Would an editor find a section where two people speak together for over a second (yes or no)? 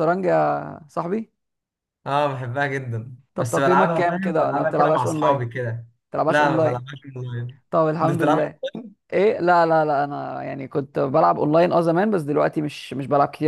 yes